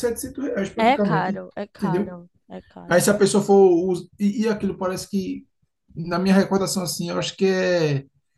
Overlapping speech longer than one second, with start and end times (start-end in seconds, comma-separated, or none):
0.8-2.2